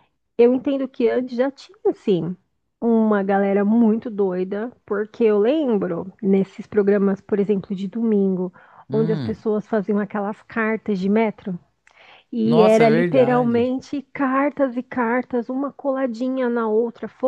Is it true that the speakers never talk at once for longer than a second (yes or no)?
no